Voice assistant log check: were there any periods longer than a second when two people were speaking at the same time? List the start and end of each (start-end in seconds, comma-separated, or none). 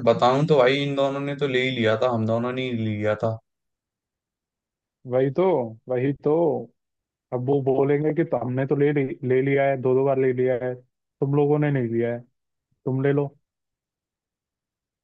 none